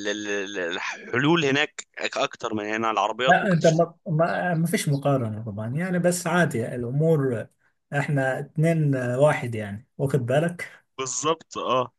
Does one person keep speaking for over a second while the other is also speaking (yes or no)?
no